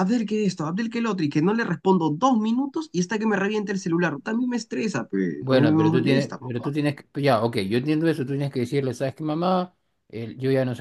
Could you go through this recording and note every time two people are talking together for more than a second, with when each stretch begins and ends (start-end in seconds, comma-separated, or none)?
5.4-6.7